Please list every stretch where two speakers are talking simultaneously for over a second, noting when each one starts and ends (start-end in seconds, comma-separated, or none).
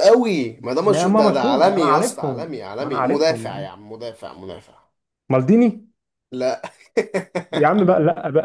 0.8-3.7